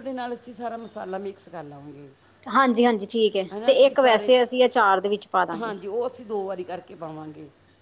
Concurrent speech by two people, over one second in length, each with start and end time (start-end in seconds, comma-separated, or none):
none